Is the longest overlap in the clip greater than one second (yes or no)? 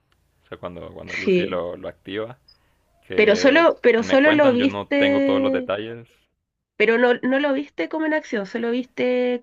yes